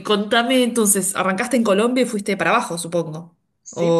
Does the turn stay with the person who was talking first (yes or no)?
no